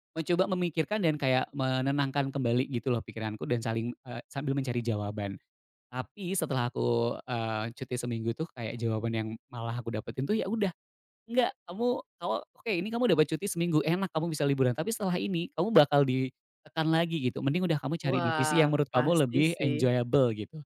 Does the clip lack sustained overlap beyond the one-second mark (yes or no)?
no